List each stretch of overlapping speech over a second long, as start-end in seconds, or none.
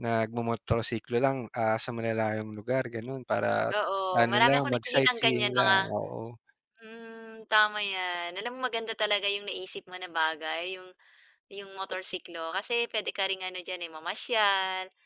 4.1-5.8